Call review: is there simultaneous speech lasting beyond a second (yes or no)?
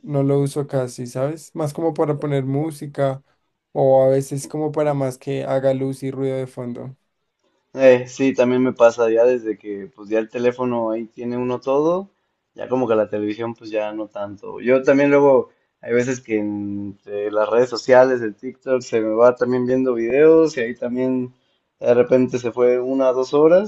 no